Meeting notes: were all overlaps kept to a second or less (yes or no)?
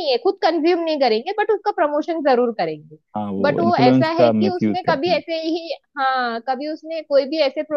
no